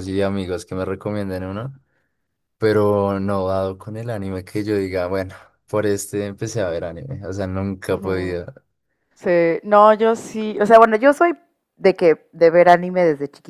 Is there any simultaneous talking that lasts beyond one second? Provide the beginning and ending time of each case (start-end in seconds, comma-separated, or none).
none